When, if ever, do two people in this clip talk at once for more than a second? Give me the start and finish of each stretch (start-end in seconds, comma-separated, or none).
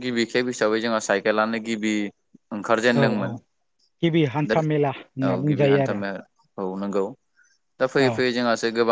4.5-6.0